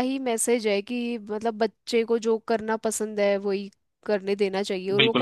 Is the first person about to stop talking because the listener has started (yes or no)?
yes